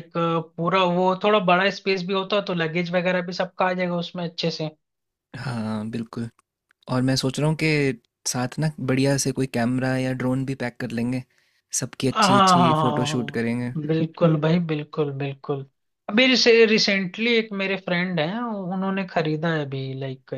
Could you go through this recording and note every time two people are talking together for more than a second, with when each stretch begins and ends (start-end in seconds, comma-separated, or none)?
12.1-13.7